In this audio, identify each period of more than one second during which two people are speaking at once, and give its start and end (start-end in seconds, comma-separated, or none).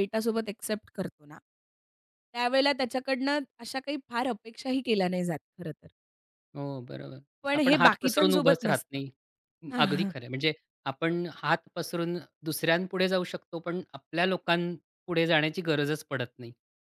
7.5-9.0